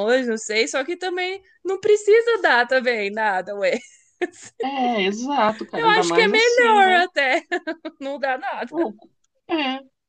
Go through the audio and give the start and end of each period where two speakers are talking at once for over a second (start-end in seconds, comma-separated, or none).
5.7-7.0